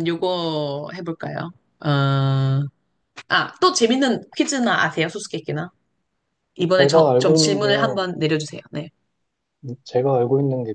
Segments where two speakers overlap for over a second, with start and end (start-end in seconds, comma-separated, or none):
6.8-8.0